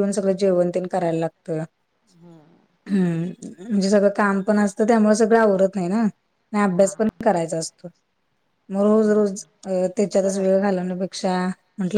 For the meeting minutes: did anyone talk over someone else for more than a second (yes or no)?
yes